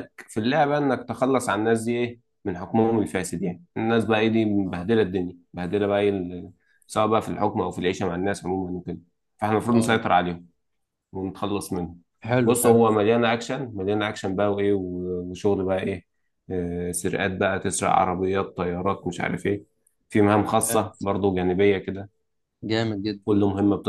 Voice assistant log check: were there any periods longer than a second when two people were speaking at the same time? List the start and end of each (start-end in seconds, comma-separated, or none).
none